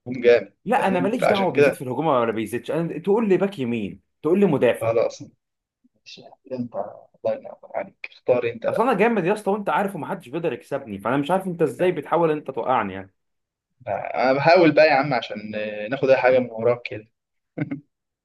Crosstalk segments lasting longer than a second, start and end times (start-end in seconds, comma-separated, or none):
0.6-1.9